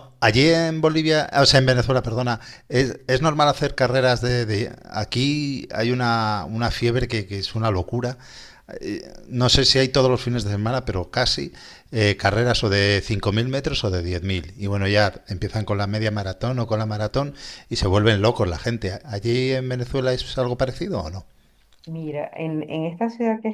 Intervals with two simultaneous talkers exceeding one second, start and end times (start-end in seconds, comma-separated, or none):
none